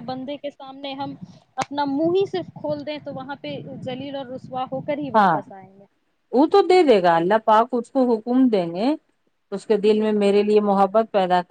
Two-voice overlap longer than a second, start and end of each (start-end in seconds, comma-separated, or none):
none